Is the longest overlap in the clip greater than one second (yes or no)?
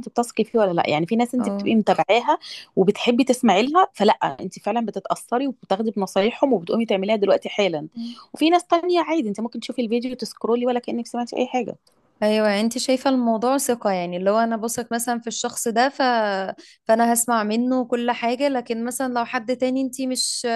no